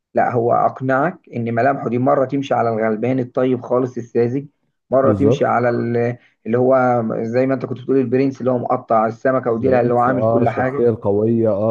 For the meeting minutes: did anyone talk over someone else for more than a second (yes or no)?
yes